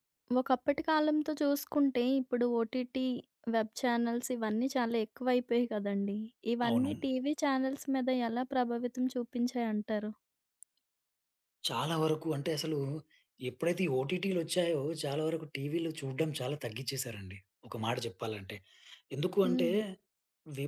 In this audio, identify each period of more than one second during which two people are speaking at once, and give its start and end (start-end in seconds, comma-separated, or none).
none